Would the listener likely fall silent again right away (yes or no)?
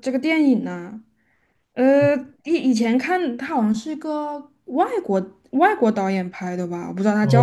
no